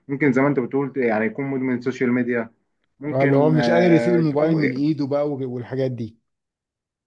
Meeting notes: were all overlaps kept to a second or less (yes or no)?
no